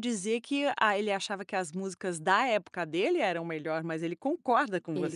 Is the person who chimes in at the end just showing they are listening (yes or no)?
no